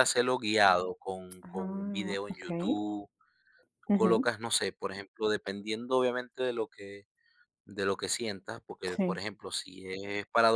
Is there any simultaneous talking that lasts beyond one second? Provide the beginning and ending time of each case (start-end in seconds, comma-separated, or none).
1.4-2.8